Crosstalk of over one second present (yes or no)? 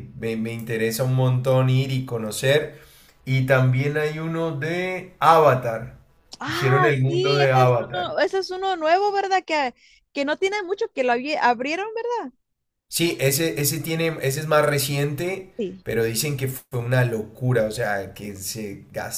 yes